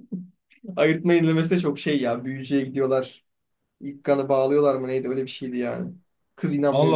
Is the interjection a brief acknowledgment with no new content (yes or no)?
no